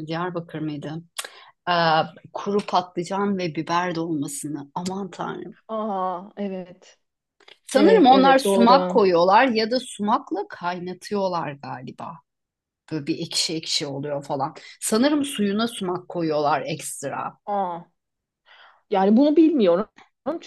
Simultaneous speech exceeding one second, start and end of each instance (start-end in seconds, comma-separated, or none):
7.7-9.0